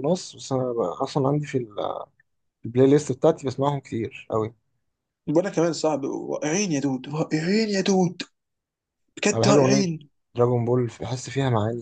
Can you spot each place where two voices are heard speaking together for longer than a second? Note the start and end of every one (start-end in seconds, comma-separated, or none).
none